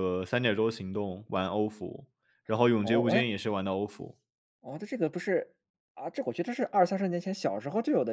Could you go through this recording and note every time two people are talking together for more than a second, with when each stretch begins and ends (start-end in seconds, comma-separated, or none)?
none